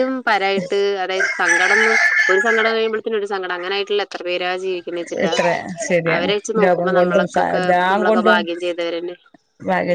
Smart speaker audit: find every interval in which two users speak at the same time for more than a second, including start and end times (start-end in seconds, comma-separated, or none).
6.1-8.4